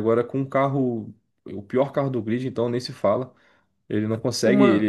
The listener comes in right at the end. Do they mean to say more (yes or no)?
no